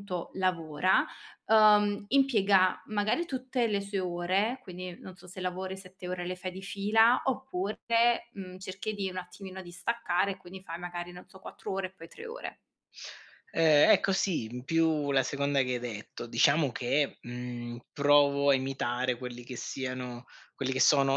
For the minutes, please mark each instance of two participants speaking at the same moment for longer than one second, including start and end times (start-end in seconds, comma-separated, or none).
none